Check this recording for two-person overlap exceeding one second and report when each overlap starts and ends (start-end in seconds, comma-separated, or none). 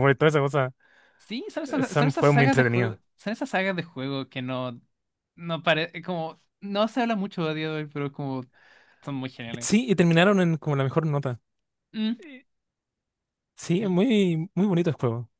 1.7-3.0